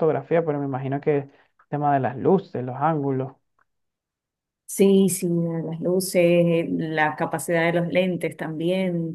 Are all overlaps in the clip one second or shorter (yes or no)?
yes